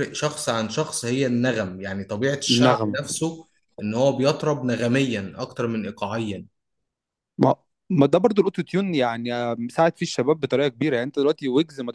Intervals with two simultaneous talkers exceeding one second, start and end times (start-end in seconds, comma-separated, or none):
none